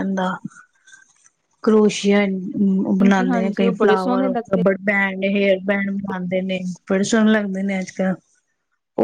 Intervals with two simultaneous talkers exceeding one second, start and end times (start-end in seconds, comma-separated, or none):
3.0-4.6